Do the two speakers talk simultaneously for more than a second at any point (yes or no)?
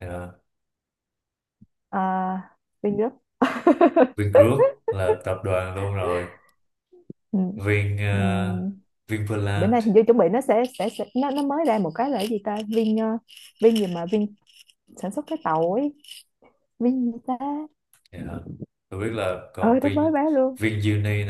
no